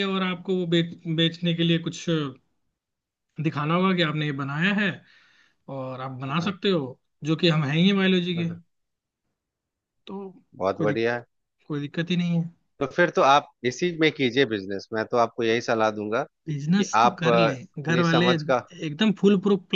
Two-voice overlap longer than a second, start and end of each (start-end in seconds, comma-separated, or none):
16.5-18.6